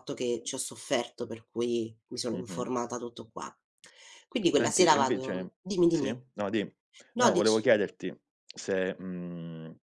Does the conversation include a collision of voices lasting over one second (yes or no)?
yes